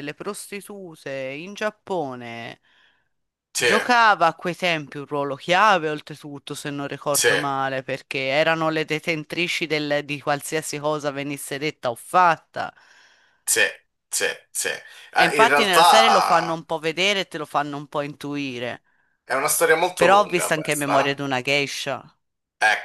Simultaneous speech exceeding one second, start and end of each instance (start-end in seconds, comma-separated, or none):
15.1-16.6, 20.0-21.2